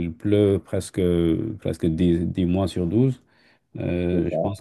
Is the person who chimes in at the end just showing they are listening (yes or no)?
yes